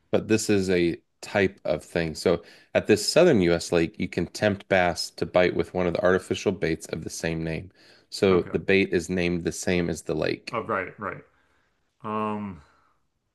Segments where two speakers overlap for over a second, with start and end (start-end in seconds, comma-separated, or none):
none